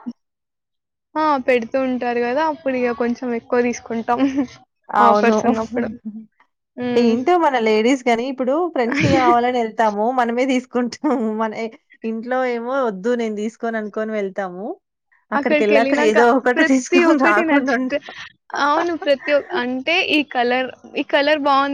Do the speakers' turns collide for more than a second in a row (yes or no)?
yes